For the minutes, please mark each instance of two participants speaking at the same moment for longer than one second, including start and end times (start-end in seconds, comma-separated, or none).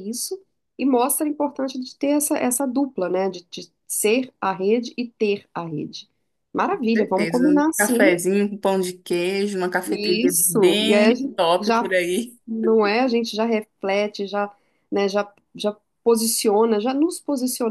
6.6-8.1, 9.8-11.8